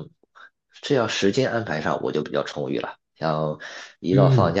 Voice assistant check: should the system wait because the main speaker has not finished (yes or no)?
yes